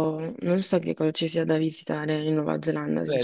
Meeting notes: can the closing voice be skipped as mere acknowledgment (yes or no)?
no